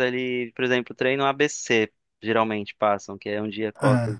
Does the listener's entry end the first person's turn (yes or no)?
no